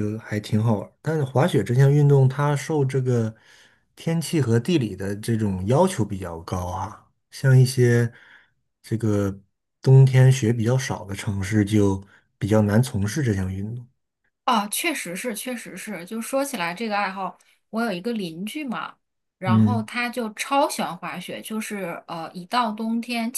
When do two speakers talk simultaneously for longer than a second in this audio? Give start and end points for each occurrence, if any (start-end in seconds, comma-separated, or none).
none